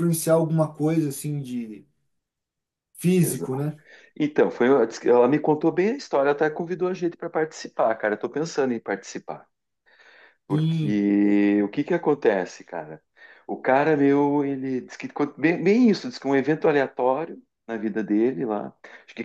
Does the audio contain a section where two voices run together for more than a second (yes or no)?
no